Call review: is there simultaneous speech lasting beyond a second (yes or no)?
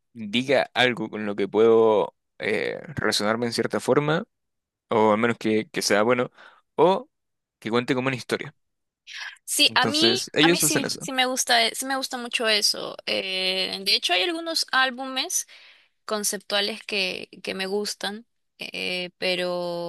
yes